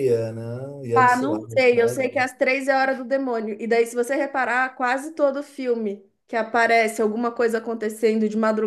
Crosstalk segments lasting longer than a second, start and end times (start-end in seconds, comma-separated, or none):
0.9-2.2